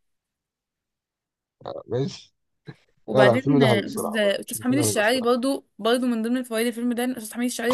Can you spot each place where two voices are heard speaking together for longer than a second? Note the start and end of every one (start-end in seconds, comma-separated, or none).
3.1-5.3